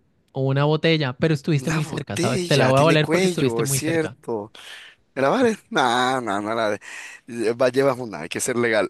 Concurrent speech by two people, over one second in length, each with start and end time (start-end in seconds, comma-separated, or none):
1.6-4.2